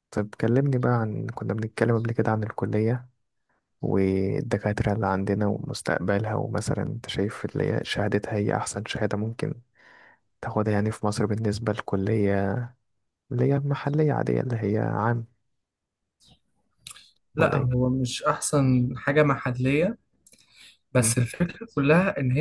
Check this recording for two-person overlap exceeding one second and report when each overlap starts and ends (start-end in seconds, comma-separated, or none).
none